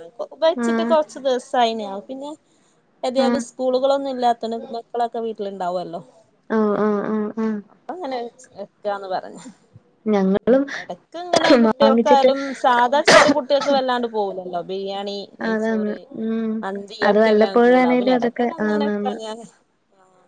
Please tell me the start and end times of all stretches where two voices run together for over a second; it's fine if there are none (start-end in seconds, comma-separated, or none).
17.2-19.1